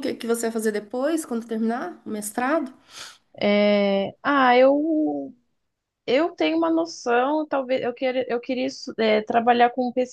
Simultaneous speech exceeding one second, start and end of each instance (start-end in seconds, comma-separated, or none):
none